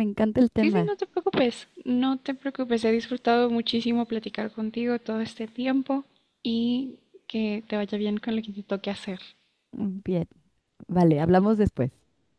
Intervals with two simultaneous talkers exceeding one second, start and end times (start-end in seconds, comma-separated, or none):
none